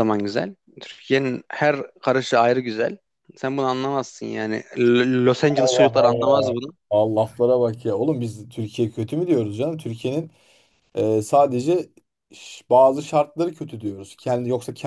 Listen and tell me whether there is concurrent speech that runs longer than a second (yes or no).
yes